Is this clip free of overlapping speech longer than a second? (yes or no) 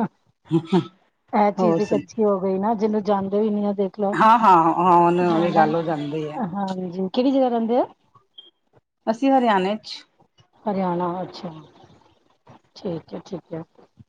yes